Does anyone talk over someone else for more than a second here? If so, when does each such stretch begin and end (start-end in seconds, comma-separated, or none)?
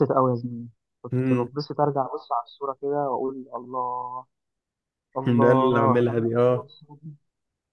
5.3-6.7